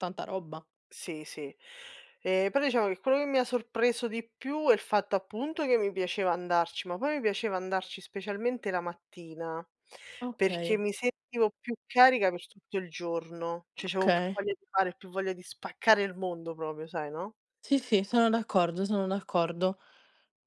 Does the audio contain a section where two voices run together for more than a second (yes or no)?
no